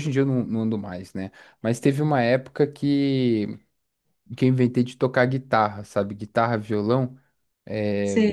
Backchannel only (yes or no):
yes